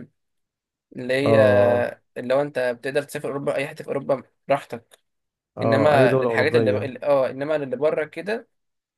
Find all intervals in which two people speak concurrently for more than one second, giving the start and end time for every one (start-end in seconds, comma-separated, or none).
5.6-6.9